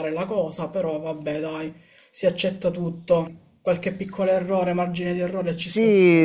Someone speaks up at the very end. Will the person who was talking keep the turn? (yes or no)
no